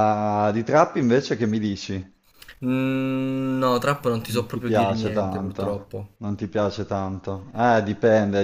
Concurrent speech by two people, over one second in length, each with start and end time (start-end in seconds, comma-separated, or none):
4.3-6.2